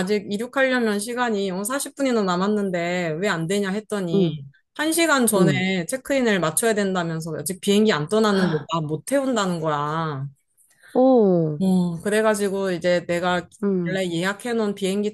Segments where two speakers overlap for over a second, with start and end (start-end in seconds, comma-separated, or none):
none